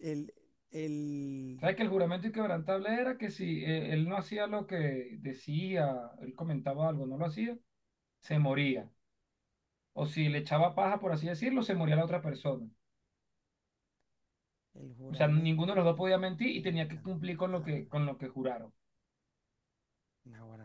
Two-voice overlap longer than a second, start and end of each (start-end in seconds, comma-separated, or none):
15.1-17.3